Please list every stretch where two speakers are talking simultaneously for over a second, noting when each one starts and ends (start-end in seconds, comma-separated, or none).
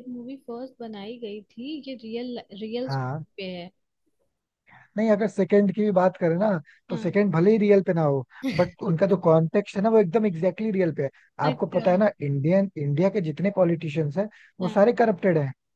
none